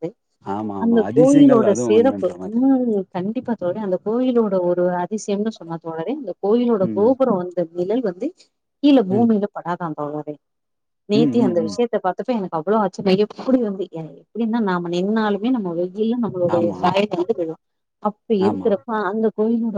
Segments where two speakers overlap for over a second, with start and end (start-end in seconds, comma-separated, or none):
0.8-2.6